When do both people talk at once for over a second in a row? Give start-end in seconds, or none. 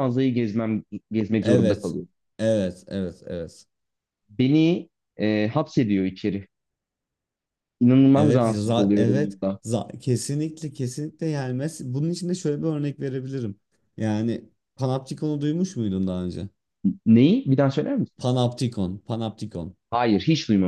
8.1-9.6